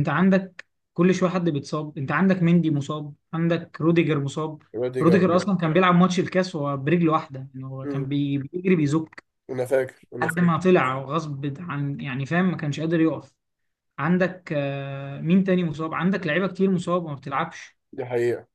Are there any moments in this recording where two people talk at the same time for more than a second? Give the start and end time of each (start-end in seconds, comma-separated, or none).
none